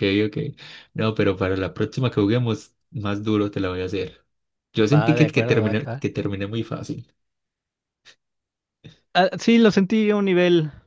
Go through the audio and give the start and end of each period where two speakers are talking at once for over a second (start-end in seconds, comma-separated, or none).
4.8-6.0